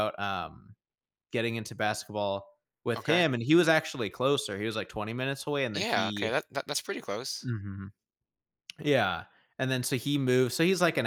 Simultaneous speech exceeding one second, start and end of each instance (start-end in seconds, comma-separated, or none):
none